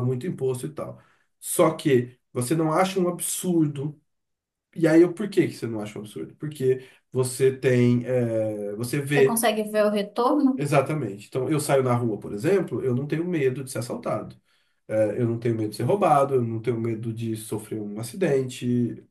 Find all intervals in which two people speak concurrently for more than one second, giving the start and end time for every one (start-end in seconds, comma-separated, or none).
none